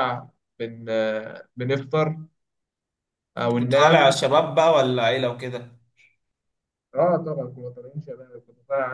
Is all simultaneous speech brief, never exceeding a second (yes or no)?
yes